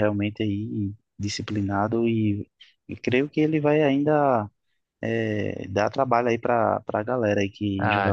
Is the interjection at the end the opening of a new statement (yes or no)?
yes